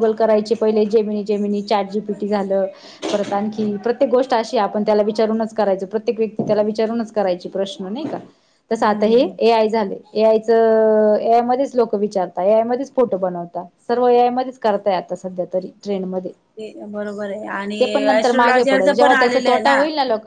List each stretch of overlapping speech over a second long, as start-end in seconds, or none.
18.2-19.6